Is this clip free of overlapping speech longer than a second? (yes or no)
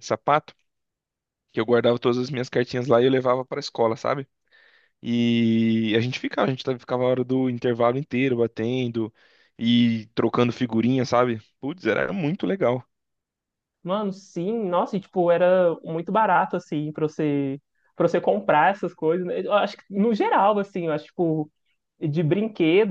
yes